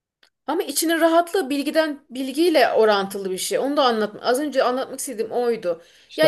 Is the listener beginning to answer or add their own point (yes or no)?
yes